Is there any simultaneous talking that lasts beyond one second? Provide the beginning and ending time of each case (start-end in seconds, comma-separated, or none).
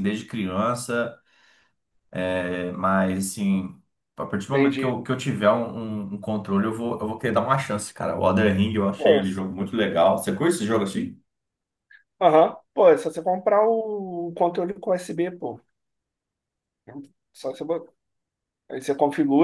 none